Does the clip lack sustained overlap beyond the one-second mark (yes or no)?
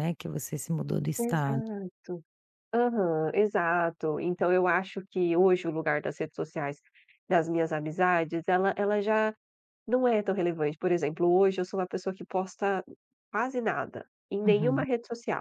yes